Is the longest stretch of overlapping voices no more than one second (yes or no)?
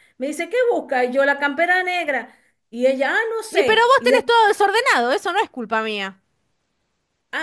yes